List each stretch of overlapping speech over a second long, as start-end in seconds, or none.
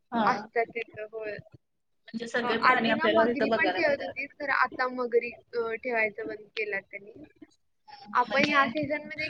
2.7-4.2